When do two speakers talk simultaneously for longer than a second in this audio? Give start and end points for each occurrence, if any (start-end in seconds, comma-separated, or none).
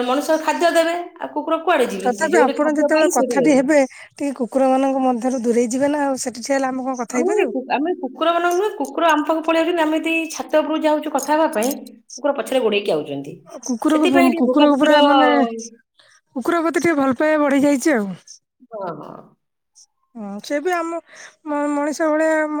2.0-3.7